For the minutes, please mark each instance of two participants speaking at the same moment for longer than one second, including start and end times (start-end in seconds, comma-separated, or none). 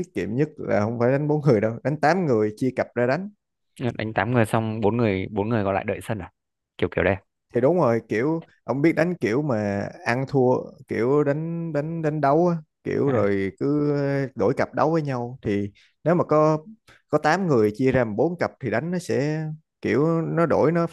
none